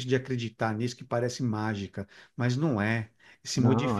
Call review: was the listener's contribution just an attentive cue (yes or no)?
yes